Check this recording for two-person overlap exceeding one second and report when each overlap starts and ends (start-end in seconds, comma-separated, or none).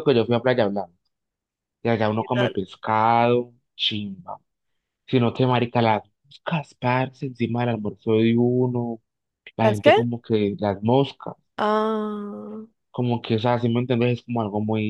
none